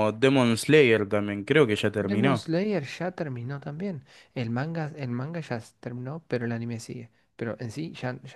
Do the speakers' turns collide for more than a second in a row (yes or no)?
no